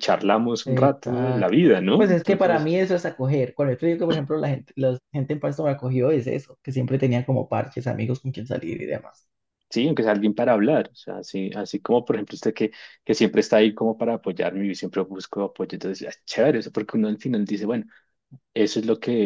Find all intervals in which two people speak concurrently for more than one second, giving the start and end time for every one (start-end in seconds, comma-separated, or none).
0.7-2.7